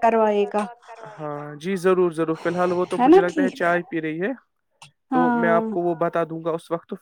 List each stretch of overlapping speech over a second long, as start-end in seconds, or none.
none